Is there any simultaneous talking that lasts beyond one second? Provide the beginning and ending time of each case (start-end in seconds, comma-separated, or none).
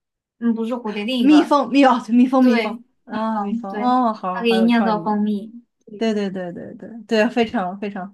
2.4-5.2